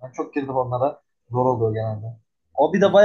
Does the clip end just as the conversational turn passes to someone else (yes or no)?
no